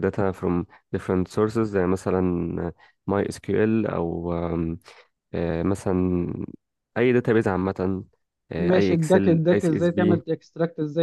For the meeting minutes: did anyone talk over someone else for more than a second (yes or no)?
yes